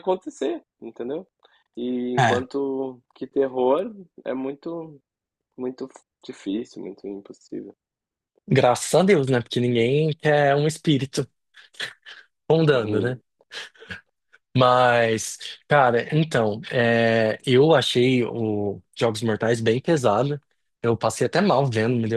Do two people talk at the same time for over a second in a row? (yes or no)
no